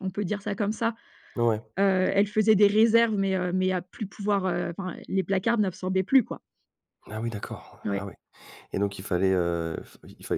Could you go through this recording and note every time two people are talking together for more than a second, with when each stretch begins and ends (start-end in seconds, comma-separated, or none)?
none